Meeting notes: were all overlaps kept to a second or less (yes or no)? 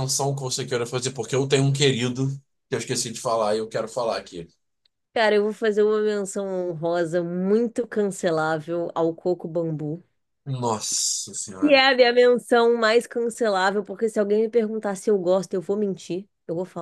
yes